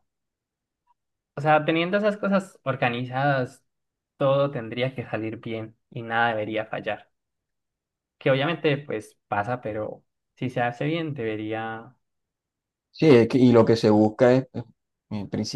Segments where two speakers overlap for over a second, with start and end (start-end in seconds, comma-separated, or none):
none